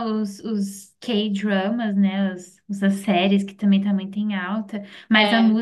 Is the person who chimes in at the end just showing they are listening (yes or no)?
yes